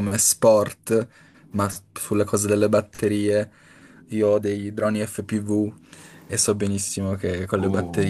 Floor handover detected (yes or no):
no